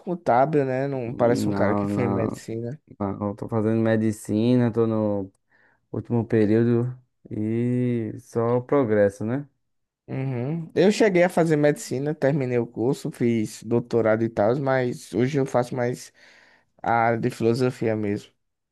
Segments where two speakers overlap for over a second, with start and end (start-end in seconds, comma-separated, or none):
1.1-2.5